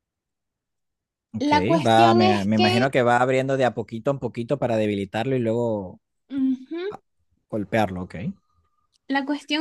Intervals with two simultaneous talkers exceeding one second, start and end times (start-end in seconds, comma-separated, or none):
1.4-2.9